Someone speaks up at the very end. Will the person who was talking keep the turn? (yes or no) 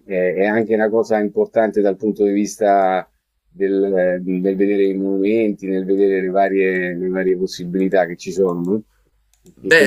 no